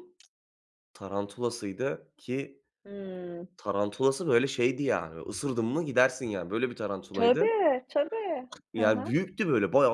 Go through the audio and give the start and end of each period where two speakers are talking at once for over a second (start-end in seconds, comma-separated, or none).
none